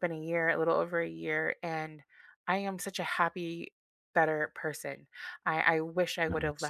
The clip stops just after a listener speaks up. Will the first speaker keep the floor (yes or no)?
yes